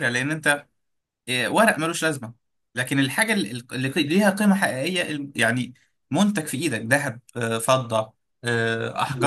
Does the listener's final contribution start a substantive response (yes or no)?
yes